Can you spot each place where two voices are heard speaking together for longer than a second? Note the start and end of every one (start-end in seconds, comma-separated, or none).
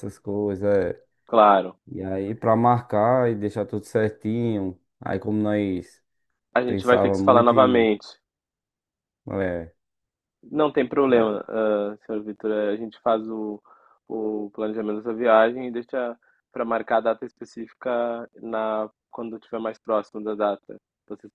6.7-7.9